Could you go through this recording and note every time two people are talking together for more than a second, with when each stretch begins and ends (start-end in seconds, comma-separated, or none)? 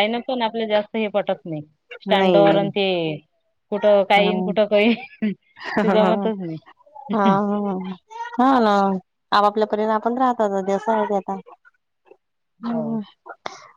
none